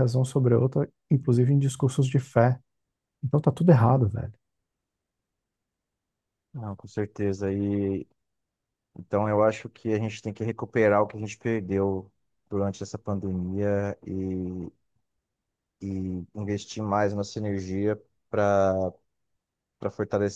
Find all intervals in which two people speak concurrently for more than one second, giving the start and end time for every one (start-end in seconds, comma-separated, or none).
none